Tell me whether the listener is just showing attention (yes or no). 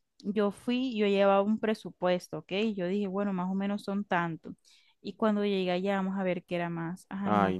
no